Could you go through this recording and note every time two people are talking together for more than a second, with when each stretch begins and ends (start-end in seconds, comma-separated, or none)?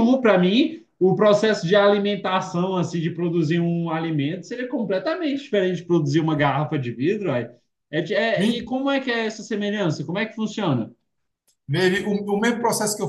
none